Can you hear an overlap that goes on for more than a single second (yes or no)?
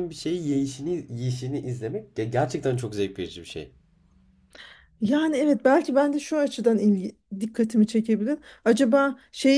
no